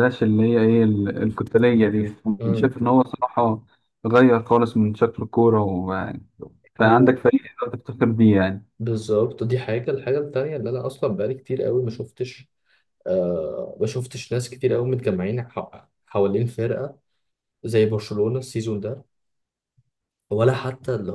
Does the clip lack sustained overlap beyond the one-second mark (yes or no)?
yes